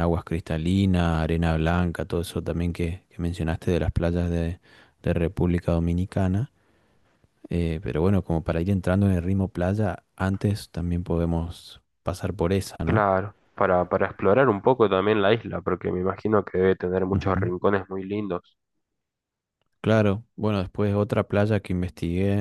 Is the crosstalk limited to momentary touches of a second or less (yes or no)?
yes